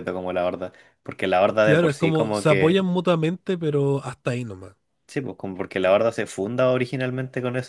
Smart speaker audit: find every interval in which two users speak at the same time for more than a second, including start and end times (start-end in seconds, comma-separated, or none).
1.6-2.8